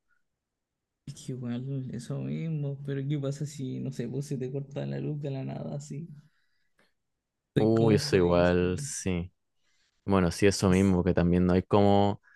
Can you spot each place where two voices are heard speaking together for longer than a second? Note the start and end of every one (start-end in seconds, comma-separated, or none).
7.6-8.9